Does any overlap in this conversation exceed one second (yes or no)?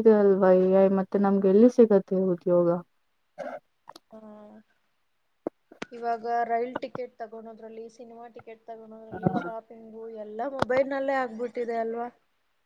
no